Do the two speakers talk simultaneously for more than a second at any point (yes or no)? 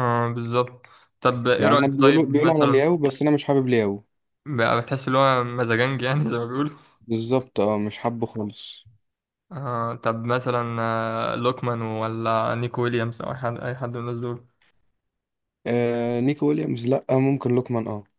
yes